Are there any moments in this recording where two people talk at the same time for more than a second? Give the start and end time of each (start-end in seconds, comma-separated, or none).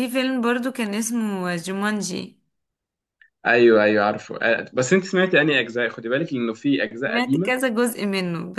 none